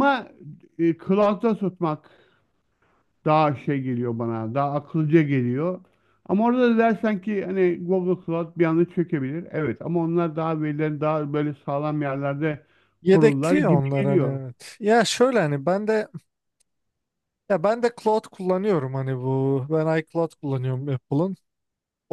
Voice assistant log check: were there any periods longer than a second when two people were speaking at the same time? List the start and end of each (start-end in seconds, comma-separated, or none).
13.1-14.4